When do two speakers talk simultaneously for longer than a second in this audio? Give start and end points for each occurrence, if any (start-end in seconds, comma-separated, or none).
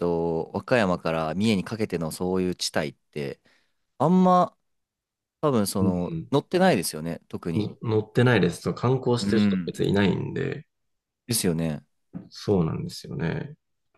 none